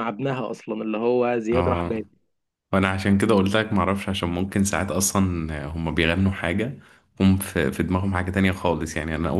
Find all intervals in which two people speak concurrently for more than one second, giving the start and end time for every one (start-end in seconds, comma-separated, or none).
none